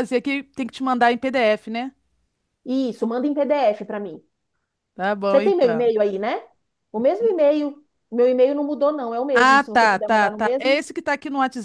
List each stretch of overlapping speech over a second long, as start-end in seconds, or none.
9.3-10.8